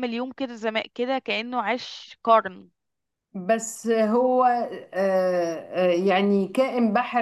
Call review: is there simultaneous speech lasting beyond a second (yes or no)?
no